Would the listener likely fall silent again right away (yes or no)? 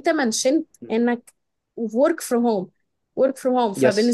yes